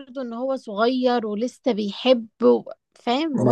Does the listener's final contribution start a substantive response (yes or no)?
yes